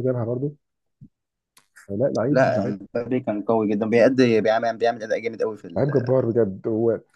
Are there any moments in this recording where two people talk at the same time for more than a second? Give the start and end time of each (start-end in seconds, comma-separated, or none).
none